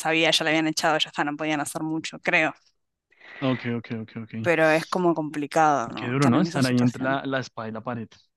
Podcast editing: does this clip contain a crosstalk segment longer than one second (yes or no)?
yes